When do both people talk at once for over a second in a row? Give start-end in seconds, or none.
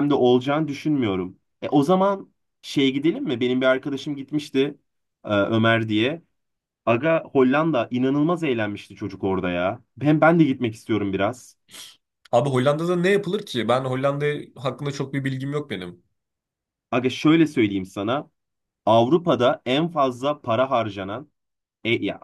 none